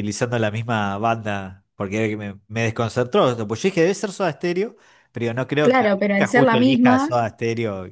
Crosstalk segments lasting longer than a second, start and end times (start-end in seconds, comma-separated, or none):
5.6-7.1